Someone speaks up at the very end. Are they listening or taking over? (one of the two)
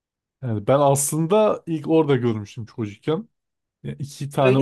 listening